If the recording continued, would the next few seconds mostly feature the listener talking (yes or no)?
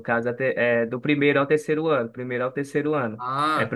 no